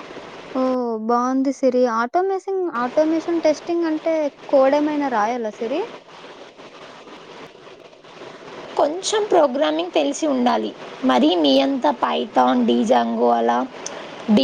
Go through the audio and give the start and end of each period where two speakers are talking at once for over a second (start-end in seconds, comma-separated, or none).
none